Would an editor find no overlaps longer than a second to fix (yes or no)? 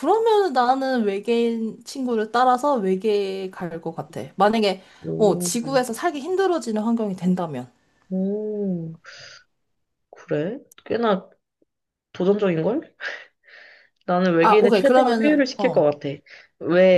no